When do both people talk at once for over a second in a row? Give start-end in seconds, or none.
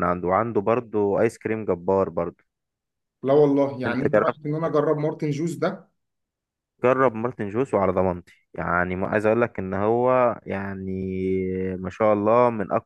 none